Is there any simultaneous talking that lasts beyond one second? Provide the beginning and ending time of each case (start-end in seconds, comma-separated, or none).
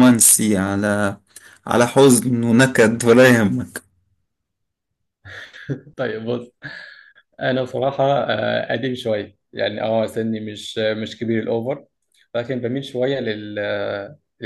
none